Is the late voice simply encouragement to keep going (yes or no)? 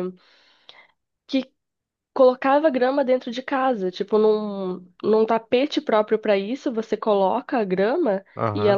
yes